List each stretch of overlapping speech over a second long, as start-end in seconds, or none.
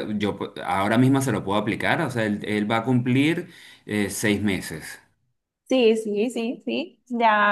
none